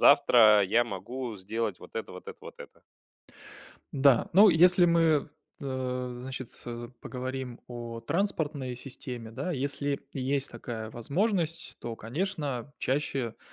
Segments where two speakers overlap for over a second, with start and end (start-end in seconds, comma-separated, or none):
none